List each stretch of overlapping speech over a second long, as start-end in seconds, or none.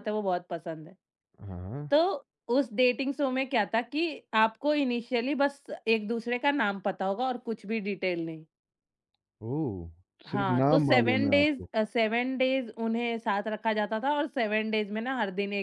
10.3-11.7